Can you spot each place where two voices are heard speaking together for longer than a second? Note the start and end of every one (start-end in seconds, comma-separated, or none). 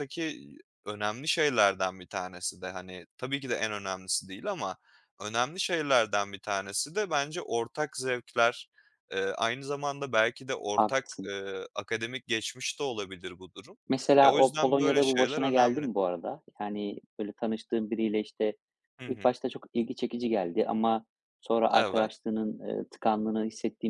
14.2-15.9